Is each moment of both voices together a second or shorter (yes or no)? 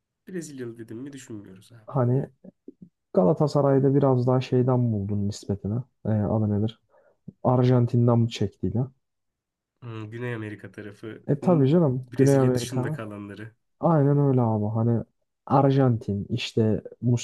no